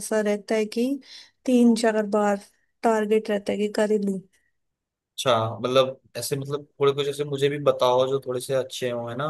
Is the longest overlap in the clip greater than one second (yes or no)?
no